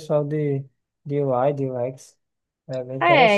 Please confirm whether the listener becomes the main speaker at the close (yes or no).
yes